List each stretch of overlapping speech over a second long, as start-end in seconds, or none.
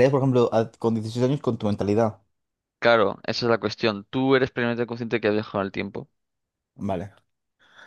none